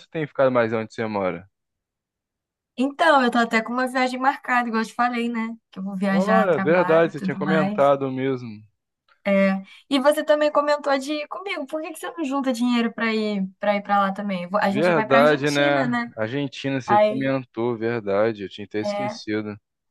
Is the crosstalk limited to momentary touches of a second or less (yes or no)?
no